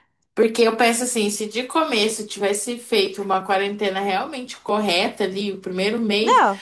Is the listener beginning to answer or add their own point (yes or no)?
no